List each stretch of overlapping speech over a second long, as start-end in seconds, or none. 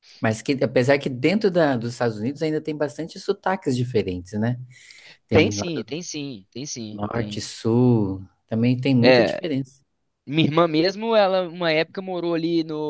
none